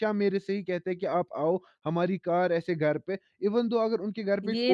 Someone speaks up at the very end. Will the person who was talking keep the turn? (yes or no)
no